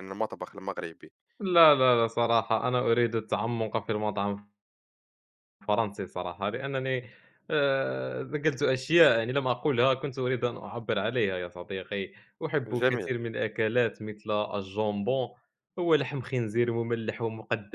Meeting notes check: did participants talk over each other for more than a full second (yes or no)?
no